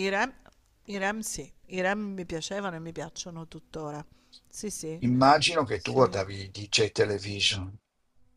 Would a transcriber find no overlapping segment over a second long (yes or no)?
yes